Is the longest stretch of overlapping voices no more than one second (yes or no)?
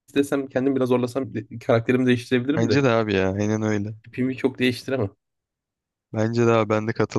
yes